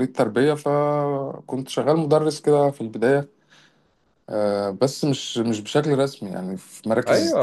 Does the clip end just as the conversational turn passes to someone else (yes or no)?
yes